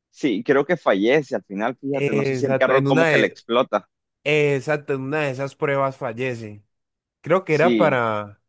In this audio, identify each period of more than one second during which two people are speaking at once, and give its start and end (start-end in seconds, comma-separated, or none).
1.9-3.4